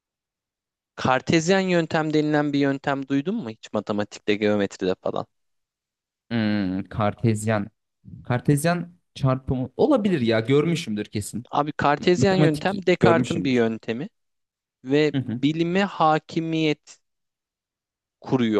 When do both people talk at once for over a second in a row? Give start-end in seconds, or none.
12.0-13.6